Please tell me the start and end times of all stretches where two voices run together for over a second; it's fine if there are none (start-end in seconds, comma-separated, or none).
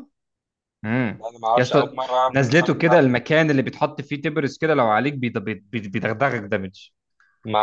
1.3-3.3